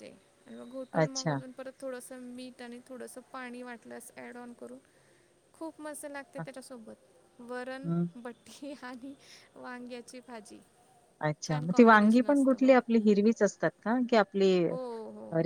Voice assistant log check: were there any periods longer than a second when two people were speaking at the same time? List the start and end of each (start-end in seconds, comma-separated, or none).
11.5-12.7